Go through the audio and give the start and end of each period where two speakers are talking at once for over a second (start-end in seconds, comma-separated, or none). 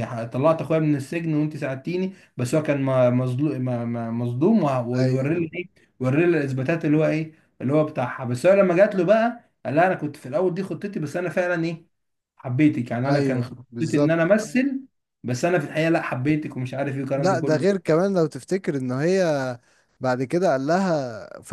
13.0-14.3